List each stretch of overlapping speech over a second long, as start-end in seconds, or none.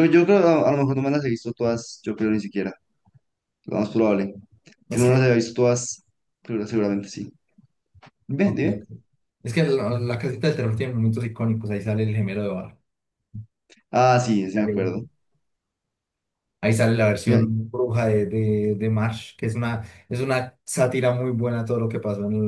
none